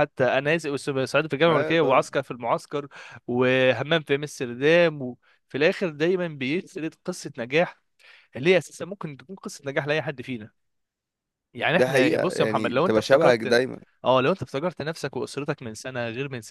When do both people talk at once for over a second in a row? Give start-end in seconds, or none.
11.7-13.6